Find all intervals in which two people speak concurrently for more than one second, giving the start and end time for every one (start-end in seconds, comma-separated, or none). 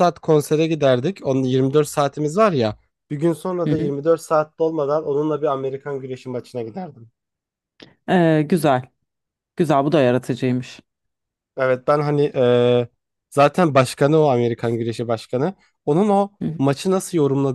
none